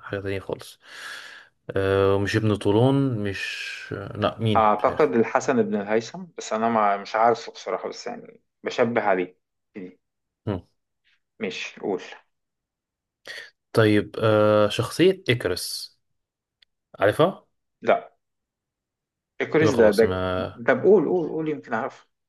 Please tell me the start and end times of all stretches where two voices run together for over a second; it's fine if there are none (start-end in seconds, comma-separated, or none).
none